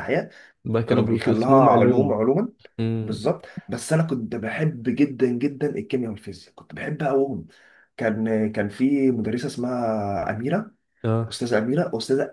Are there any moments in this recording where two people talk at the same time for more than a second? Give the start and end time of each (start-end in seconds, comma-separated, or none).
0.9-2.2